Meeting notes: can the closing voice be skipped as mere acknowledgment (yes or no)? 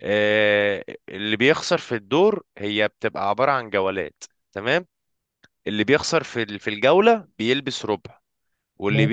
yes